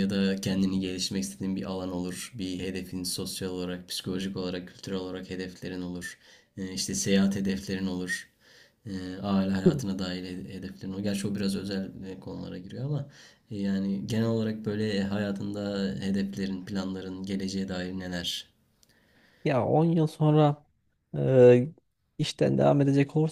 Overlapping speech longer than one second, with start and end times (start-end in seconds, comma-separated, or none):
none